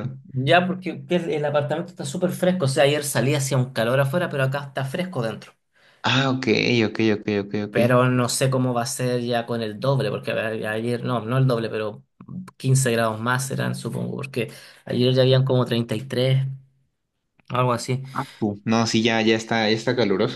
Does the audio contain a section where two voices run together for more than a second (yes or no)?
no